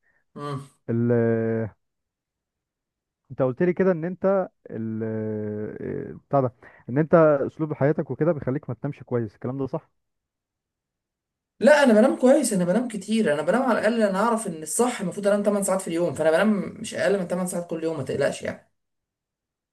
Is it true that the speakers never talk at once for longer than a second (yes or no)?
yes